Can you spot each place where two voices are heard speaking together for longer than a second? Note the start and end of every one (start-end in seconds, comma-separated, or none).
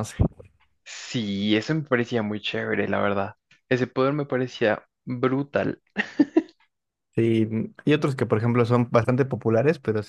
none